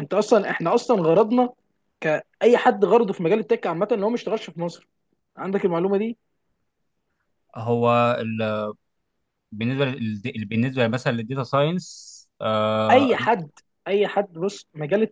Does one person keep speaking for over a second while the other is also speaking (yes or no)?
no